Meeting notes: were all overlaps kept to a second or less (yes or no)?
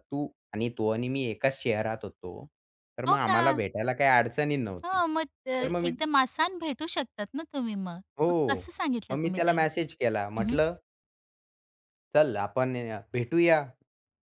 yes